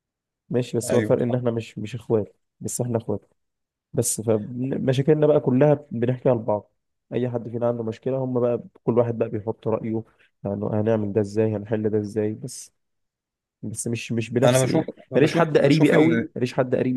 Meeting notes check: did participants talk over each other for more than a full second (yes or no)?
yes